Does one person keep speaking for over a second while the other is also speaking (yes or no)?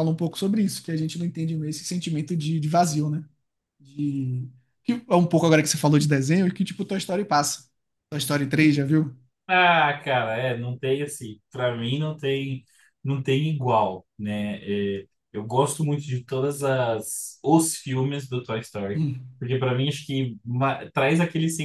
no